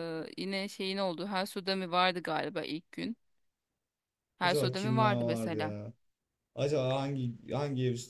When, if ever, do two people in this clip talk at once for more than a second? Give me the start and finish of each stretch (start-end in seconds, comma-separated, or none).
4.4-5.8